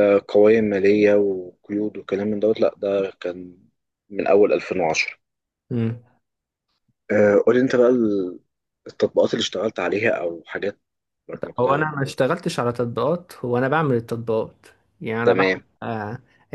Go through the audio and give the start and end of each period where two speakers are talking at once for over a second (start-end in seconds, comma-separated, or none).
none